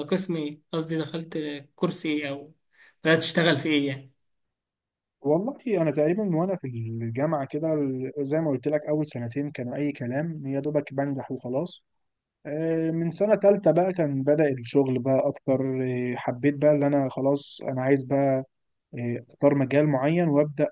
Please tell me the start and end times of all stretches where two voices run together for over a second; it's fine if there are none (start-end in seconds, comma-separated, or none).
none